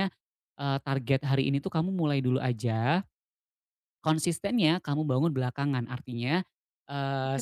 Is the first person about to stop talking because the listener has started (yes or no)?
no